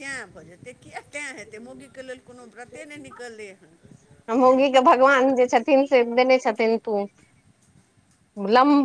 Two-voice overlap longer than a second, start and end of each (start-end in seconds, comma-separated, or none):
none